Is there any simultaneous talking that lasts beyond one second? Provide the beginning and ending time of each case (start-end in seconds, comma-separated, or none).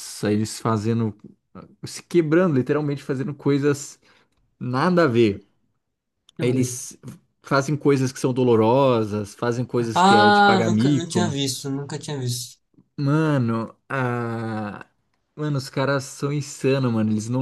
9.9-11.2